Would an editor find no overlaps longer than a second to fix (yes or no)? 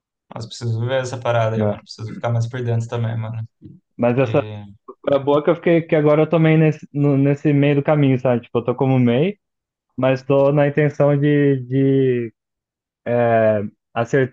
yes